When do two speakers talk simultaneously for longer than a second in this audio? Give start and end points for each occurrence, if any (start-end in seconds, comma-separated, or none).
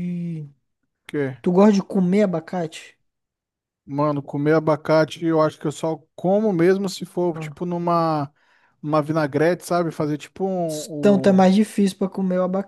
none